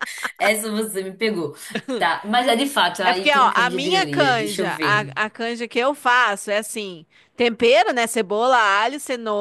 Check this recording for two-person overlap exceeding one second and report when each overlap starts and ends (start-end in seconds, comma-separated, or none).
3.0-5.2